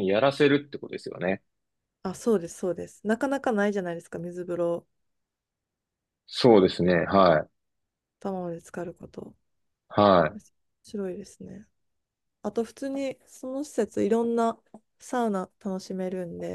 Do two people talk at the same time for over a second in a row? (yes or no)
no